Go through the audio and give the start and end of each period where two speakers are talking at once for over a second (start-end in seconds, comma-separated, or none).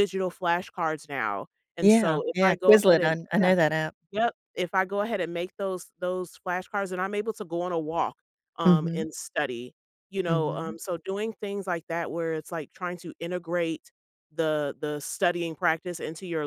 1.8-3.5